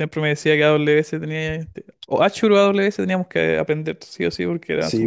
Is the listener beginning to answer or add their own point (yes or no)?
yes